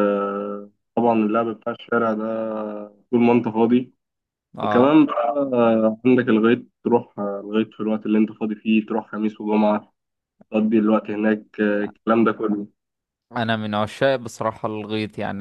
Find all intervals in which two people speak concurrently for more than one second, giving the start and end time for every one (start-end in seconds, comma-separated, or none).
none